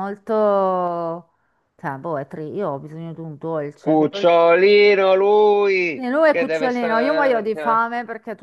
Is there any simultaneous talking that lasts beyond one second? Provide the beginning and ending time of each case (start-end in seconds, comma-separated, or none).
5.9-7.8